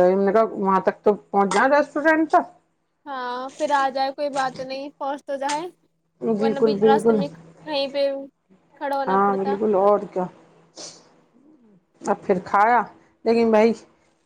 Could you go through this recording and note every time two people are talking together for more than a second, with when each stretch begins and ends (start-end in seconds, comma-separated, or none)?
none